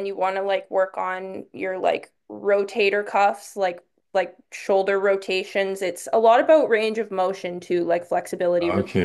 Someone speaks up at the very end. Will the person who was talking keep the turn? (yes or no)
no